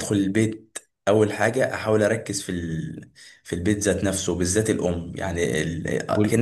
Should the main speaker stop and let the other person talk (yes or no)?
no